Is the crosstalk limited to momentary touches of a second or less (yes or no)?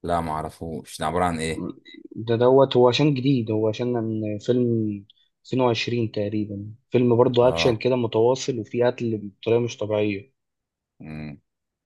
yes